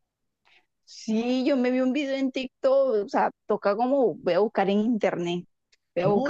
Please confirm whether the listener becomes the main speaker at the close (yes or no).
yes